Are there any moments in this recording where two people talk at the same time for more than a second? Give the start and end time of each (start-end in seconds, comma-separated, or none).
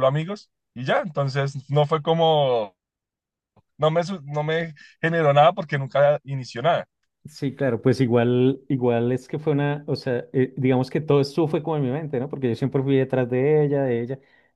none